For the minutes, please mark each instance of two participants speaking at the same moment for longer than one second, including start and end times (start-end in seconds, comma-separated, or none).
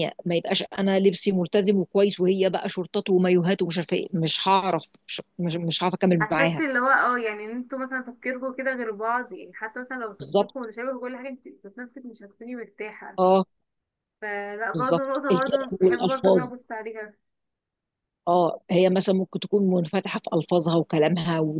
14.7-16.5